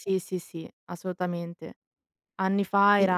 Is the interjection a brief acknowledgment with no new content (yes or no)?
yes